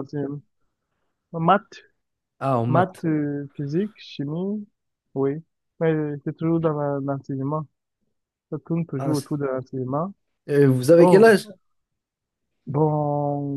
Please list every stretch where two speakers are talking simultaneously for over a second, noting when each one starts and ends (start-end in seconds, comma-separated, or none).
none